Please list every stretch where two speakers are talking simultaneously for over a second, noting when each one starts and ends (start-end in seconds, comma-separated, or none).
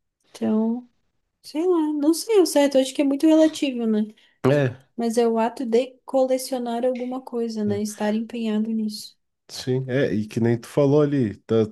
none